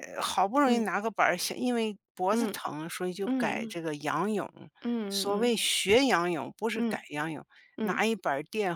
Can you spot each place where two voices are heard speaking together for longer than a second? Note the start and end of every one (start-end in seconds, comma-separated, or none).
none